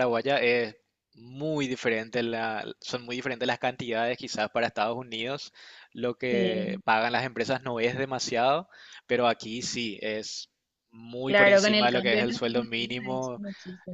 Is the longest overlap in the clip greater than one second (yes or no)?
yes